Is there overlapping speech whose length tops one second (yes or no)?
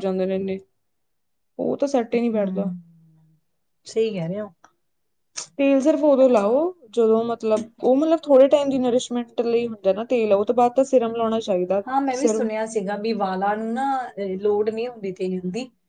no